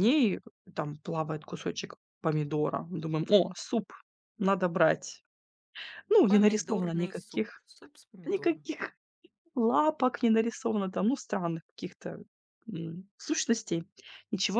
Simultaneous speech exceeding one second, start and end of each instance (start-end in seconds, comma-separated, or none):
6.3-7.6